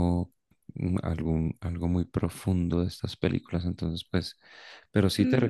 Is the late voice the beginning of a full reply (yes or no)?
yes